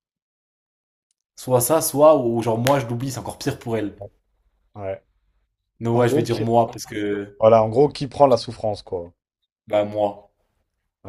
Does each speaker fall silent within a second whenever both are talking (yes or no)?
yes